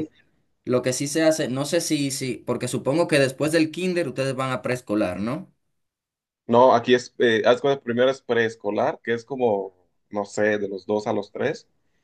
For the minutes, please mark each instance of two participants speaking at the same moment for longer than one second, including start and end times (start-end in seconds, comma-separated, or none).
none